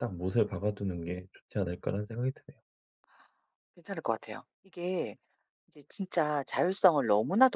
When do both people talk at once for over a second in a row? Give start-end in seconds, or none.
none